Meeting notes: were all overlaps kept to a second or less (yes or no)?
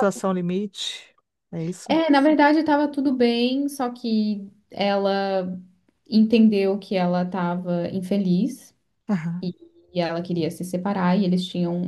yes